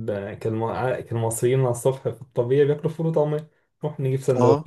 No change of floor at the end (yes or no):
yes